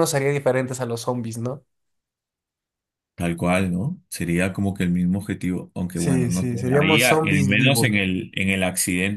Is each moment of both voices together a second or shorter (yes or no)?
no